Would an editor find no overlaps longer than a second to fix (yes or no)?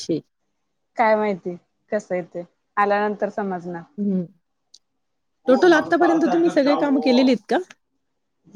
no